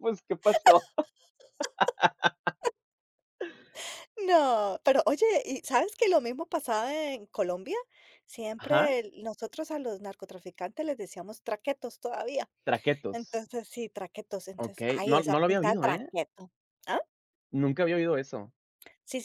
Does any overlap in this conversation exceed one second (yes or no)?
yes